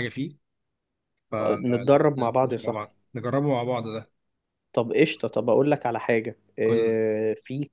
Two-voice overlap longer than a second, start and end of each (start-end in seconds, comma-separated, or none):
1.4-2.9